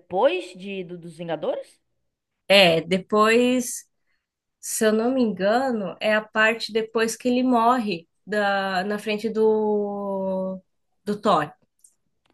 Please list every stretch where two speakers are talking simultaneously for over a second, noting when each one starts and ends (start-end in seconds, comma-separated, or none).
none